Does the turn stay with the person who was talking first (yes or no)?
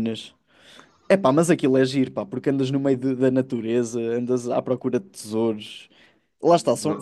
yes